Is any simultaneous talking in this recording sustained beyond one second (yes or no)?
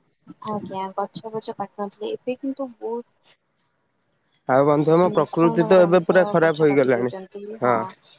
yes